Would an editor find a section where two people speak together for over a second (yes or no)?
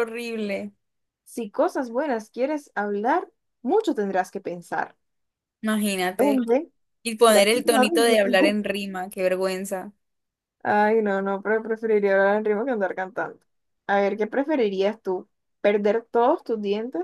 yes